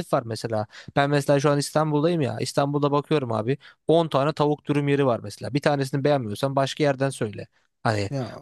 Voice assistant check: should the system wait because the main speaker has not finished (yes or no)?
yes